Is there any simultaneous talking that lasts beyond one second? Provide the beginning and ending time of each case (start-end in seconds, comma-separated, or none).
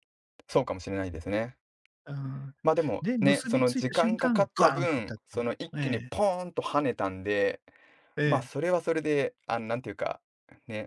3.0-6.1